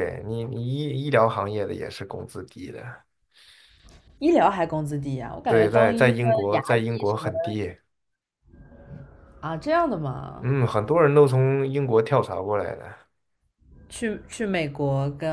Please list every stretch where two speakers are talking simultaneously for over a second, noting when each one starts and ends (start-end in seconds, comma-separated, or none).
5.5-7.4